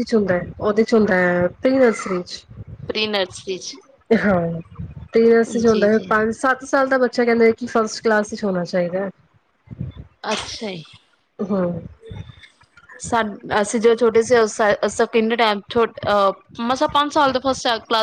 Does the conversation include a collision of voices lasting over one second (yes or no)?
no